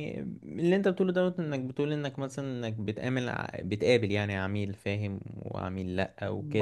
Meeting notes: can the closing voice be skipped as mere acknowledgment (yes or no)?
no